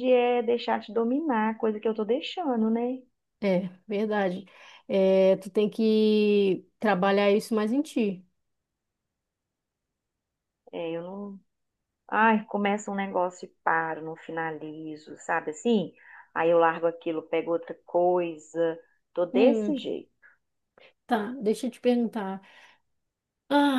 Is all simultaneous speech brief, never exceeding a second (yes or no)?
yes